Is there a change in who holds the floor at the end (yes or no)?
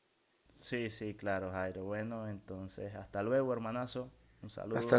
yes